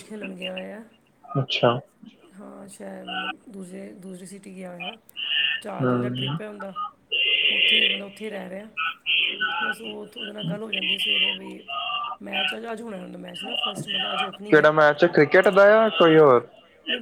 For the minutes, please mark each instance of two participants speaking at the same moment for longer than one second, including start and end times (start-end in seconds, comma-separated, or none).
none